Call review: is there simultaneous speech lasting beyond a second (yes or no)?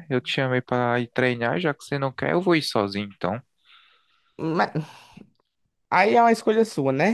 no